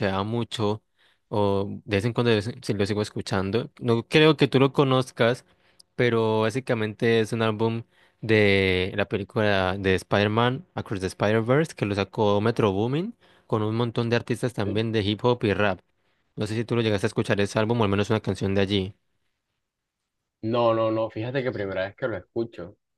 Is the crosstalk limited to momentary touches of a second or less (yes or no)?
yes